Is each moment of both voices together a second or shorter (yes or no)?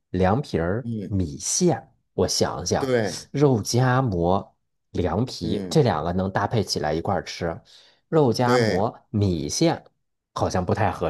yes